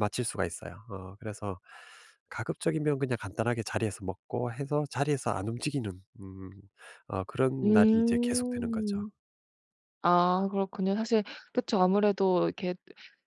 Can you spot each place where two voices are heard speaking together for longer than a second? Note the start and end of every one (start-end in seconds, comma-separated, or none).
7.6-9.0